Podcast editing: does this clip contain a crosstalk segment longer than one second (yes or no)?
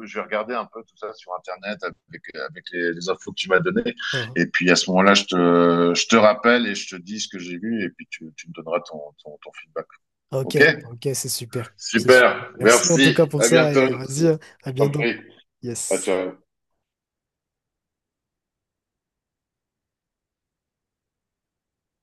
yes